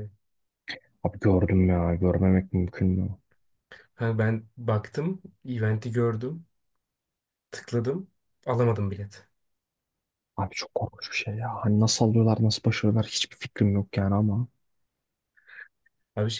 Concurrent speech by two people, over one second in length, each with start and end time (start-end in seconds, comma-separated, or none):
none